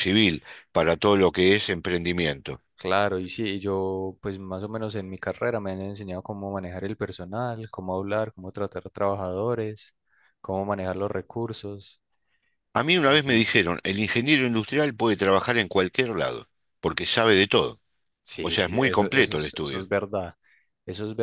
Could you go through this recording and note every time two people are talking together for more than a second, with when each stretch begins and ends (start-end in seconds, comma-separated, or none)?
18.4-19.9